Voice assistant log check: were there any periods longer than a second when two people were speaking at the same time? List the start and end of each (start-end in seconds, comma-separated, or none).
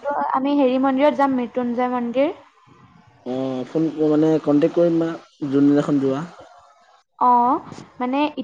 none